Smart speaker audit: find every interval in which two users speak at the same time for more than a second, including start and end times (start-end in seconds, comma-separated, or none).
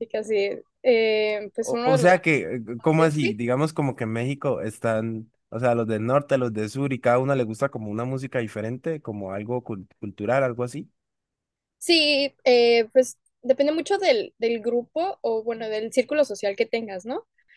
1.6-3.4